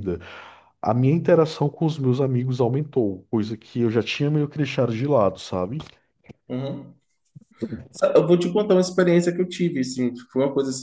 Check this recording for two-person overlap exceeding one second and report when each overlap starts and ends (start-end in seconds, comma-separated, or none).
none